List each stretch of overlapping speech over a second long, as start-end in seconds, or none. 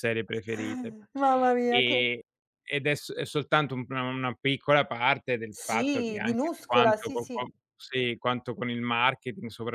5.5-7.4